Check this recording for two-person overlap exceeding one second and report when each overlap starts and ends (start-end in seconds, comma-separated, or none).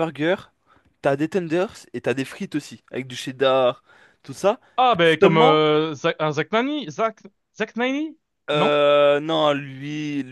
none